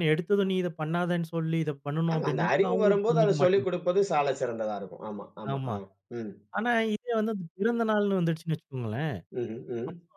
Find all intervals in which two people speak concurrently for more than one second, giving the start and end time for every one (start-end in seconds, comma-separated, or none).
2.1-3.7